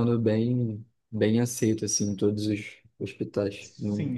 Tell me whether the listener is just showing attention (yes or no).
no